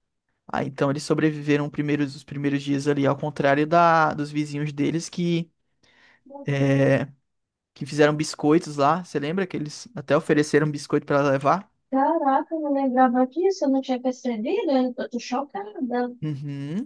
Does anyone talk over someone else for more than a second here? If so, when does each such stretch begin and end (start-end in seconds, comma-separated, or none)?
none